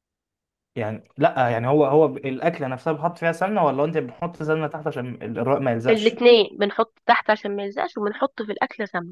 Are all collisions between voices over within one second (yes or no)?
yes